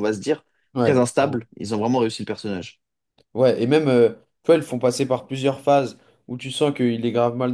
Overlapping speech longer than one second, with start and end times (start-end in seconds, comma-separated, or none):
none